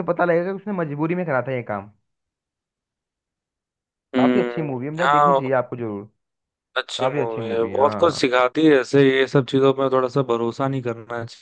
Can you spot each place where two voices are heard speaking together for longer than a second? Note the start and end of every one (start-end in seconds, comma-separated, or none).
4.2-5.5, 7.0-8.3